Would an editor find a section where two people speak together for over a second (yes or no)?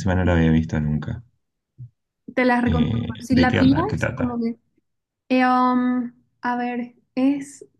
yes